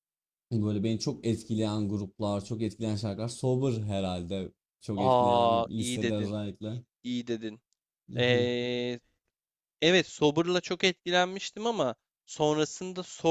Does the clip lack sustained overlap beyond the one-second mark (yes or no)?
no